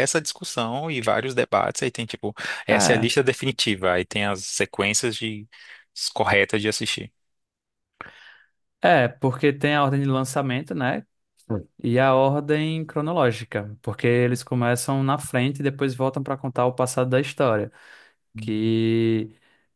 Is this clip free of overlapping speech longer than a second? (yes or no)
yes